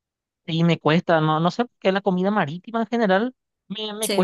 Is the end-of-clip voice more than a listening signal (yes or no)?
no